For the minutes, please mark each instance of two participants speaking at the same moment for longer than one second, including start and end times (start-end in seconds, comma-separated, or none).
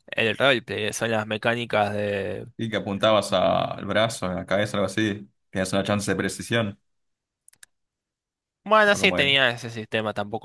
none